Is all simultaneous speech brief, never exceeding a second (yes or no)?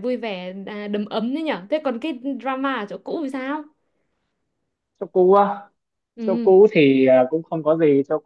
yes